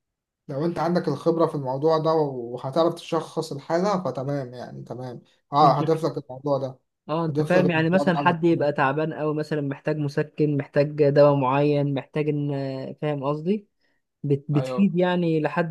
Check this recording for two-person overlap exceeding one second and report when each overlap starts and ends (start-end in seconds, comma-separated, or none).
7.3-8.7